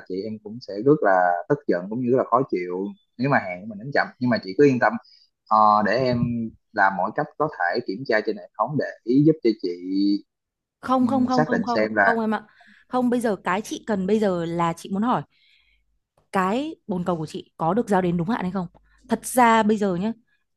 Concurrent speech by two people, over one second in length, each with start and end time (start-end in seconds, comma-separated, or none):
11.0-12.2